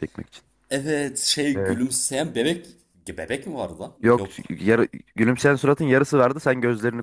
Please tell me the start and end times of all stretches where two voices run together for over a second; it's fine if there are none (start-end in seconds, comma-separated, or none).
none